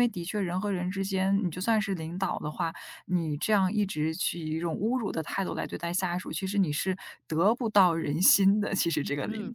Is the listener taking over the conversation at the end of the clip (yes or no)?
yes